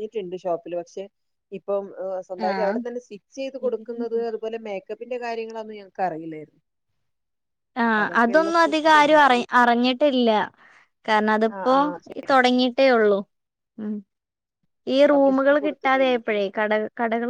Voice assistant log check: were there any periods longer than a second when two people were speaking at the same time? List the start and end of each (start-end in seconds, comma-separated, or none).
7.9-9.4, 15.1-16.4